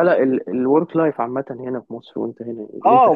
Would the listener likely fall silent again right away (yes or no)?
no